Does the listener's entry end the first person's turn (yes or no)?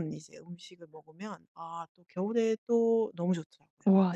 yes